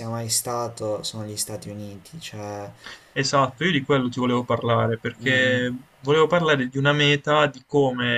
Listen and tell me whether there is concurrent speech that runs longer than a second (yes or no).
no